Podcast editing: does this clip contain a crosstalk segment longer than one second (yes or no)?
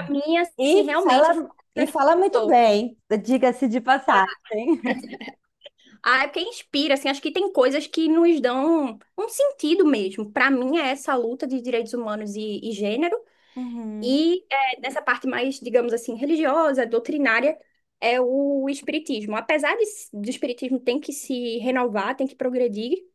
yes